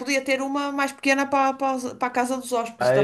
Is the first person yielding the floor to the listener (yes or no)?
yes